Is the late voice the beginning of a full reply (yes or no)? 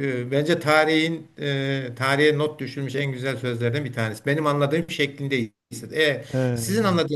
no